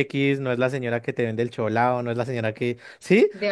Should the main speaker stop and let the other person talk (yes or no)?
no